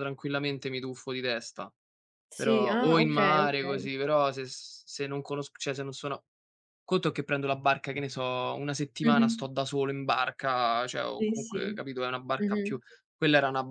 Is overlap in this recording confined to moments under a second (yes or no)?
no